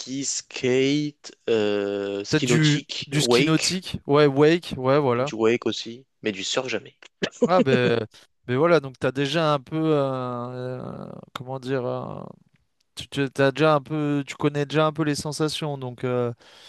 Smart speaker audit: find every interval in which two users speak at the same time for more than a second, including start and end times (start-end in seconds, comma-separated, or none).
2.3-3.7